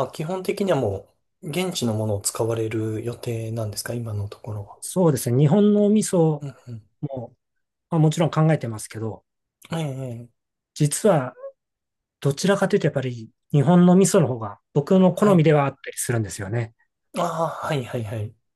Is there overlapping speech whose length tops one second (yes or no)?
no